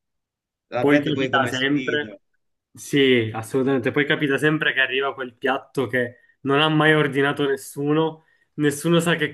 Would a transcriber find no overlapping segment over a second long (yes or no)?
no